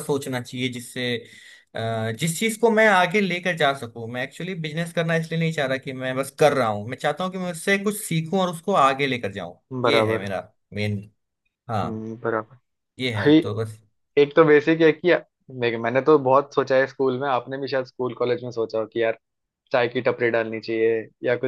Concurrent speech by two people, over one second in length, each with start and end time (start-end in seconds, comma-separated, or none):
none